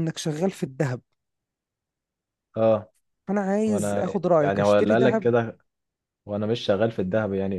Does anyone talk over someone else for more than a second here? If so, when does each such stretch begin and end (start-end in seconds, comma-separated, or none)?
3.7-5.3